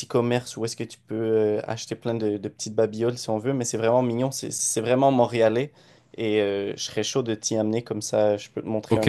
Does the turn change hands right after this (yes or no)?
yes